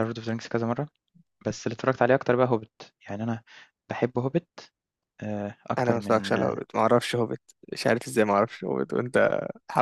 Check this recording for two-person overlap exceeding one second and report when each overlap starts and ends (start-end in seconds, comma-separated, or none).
none